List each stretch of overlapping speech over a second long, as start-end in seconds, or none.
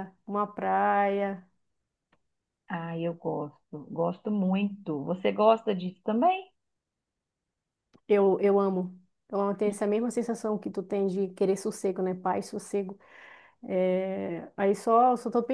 none